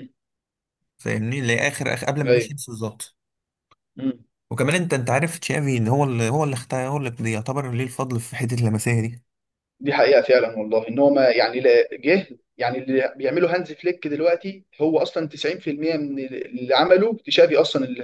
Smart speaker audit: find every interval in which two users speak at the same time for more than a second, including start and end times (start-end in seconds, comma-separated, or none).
none